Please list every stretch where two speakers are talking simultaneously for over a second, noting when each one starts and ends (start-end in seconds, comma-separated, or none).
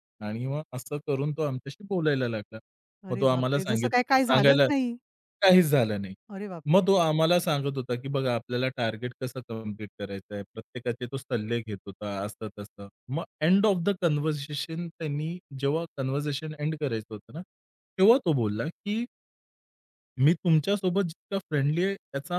3.1-4.7